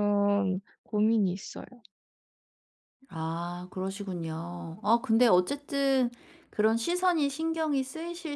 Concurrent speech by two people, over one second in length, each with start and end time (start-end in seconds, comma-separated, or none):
none